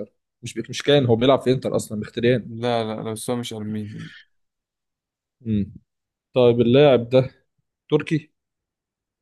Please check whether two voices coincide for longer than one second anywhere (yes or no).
no